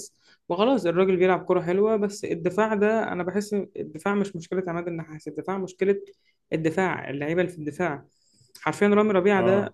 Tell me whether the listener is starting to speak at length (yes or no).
no